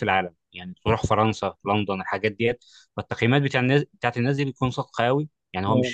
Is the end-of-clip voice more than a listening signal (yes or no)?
no